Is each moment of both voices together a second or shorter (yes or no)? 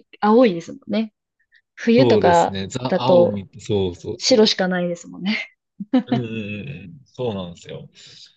no